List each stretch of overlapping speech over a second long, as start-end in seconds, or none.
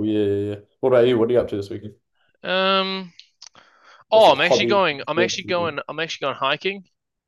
4.1-5.8